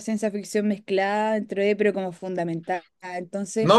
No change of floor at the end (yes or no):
no